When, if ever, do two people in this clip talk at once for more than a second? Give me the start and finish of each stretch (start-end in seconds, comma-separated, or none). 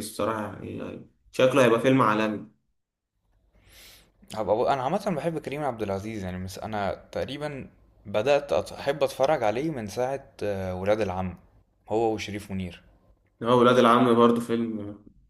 none